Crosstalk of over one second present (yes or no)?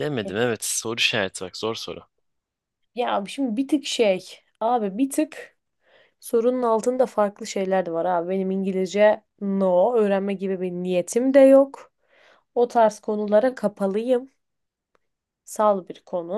no